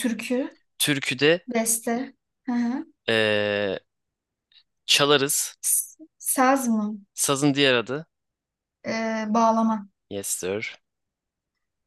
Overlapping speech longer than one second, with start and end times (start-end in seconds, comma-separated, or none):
none